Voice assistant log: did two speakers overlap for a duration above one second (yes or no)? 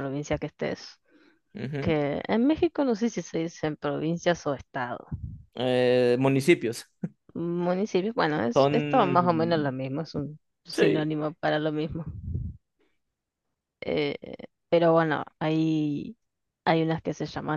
yes